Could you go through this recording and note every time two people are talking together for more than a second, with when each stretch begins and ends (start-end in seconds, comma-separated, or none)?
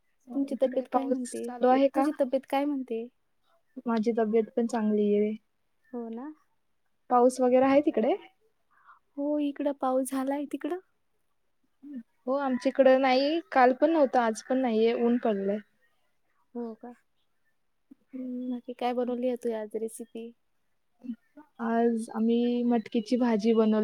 0.6-2.0